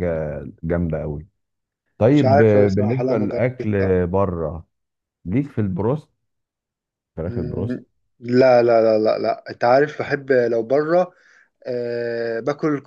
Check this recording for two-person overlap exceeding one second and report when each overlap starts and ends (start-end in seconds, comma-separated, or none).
2.1-3.7